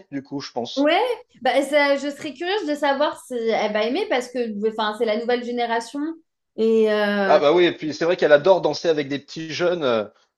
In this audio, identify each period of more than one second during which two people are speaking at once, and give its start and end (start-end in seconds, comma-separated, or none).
none